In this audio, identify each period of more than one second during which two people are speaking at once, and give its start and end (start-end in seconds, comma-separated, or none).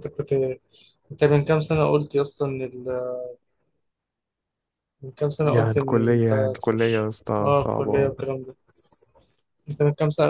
5.4-8.1